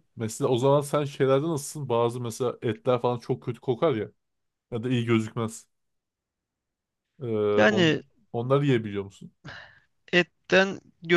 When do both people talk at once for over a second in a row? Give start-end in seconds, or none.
none